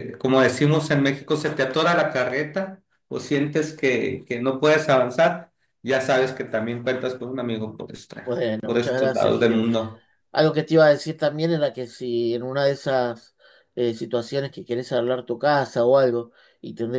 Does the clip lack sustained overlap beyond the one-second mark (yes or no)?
no